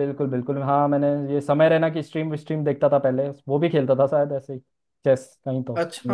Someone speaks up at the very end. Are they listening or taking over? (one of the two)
taking over